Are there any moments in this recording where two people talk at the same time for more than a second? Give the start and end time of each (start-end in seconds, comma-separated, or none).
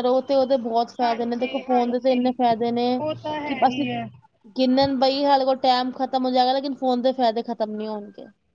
1.0-2.3